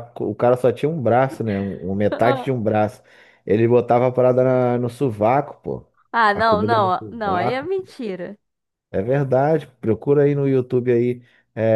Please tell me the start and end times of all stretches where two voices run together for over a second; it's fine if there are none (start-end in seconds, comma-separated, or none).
6.3-7.7